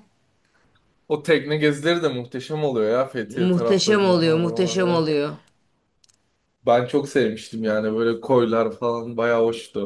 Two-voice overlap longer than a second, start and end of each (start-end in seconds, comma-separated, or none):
3.4-5.0